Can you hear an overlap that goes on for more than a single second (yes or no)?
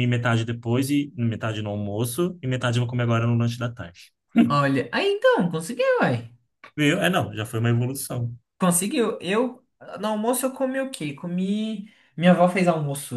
no